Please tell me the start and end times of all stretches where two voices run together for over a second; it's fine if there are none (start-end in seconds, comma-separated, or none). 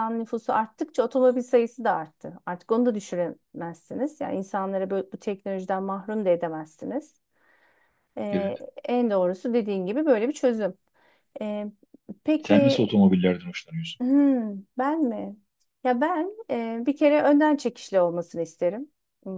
none